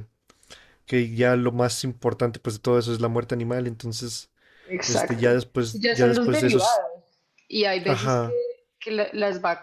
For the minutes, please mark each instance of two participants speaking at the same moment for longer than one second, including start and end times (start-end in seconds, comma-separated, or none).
4.9-6.8